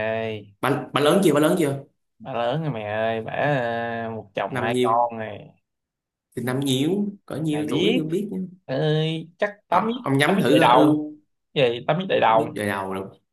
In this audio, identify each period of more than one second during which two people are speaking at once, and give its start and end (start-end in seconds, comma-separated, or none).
9.7-11.1